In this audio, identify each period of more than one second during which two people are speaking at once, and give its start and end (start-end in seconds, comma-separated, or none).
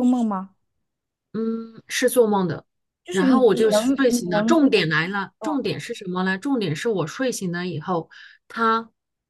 3.1-4.7